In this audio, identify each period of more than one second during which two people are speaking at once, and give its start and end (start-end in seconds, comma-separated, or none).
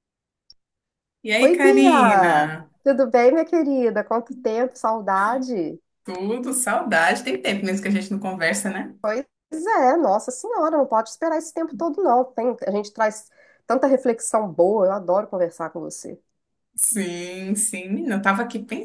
1.4-2.7